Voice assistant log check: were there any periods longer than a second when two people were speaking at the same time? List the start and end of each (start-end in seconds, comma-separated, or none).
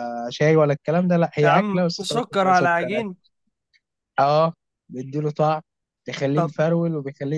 1.4-3.0